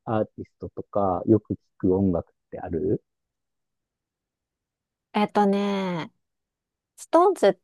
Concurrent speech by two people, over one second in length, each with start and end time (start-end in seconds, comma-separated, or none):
none